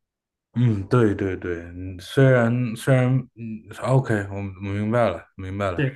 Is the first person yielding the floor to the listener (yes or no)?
yes